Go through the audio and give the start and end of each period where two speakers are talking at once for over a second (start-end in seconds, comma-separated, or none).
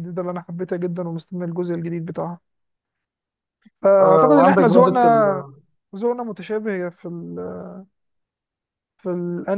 4.0-5.4